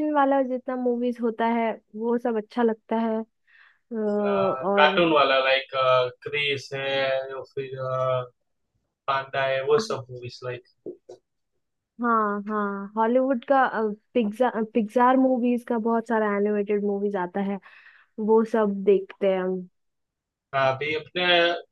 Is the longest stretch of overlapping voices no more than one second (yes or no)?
yes